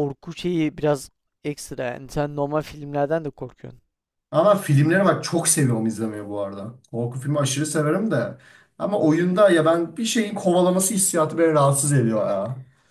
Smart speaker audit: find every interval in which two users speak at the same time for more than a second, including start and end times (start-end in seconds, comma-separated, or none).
none